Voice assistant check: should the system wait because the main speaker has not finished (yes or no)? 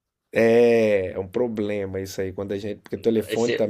yes